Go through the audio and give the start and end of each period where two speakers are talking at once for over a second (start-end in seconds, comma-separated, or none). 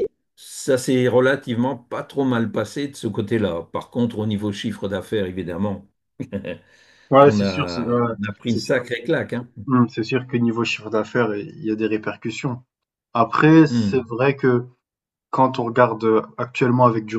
7.2-8.8